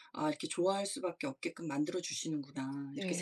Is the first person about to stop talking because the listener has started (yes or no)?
yes